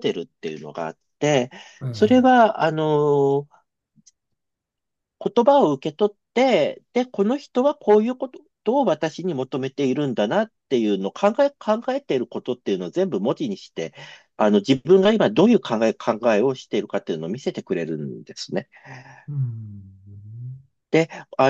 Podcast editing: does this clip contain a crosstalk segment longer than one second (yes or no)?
no